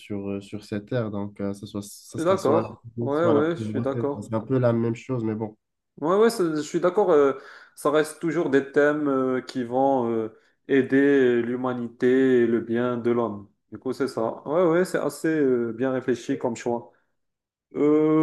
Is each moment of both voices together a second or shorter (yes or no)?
no